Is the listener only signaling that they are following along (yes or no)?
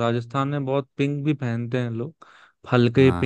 yes